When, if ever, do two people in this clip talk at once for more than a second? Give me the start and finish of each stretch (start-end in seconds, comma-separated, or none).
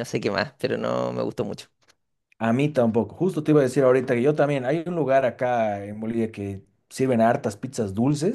none